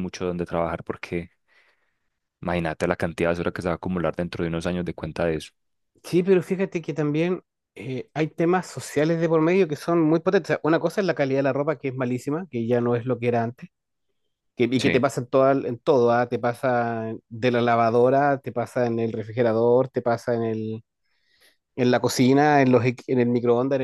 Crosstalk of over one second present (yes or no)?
no